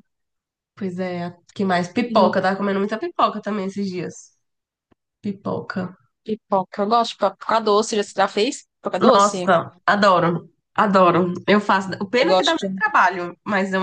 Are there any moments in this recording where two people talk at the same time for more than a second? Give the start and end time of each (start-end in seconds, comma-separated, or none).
none